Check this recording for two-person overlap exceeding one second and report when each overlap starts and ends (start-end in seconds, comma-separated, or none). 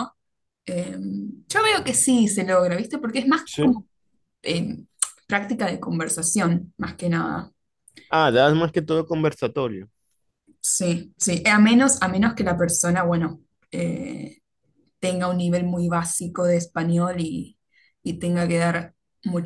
none